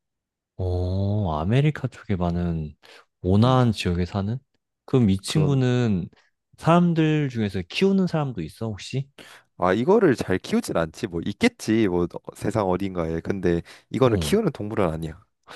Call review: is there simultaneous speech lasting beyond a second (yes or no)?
no